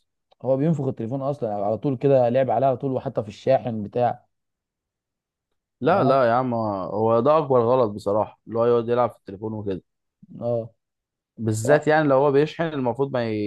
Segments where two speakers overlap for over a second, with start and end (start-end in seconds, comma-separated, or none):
none